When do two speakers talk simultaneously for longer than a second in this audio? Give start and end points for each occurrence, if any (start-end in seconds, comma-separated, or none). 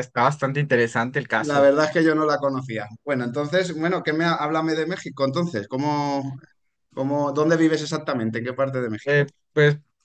none